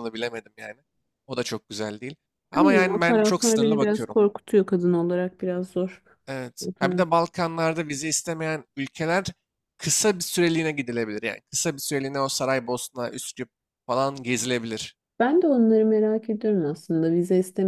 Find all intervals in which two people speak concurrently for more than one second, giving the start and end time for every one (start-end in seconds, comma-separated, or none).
2.5-4.2